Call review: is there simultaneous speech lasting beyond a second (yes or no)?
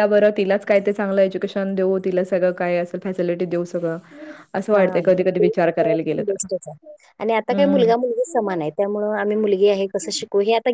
yes